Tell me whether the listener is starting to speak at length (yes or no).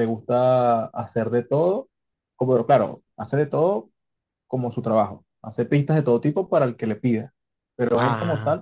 no